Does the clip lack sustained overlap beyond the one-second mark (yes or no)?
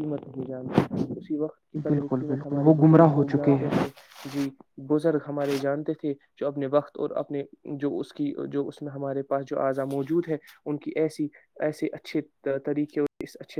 no